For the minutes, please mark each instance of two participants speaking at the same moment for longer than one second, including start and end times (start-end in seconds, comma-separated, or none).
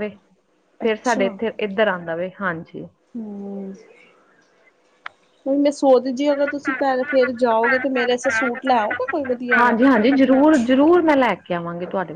none